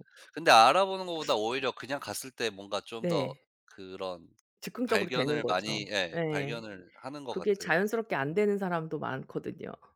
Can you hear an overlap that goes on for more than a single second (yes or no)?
yes